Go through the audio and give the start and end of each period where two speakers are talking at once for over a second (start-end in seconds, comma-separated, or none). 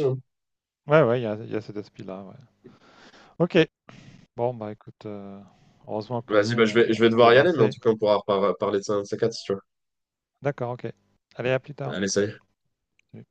6.3-7.8